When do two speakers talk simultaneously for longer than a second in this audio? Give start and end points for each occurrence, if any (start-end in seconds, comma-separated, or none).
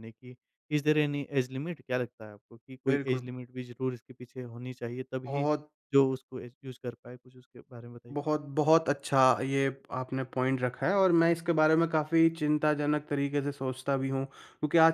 none